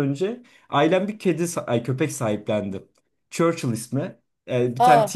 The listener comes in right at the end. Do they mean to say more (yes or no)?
no